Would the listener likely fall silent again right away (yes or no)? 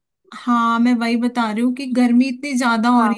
yes